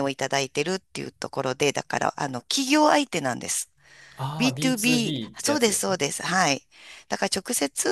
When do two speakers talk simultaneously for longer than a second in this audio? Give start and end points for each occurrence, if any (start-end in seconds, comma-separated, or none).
4.4-6.0